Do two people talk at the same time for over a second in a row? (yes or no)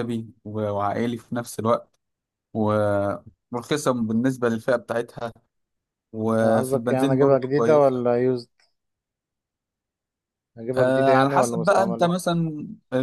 yes